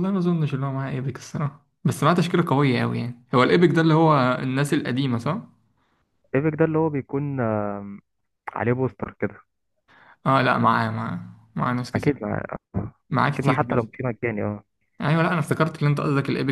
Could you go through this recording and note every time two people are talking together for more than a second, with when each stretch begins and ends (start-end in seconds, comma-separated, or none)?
none